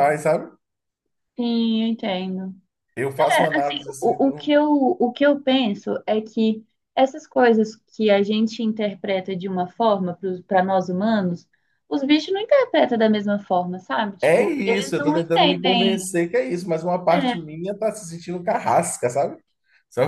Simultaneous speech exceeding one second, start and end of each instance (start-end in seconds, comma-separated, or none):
3.2-4.5, 14.2-16.0